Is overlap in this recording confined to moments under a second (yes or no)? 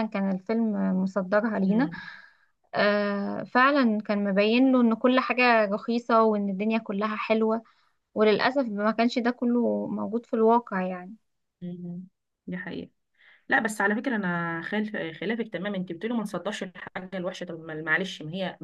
yes